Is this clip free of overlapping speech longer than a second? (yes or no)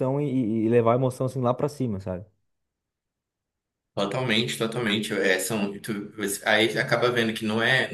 yes